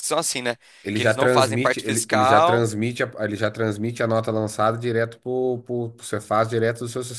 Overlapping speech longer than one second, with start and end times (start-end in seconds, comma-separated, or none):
0.9-2.7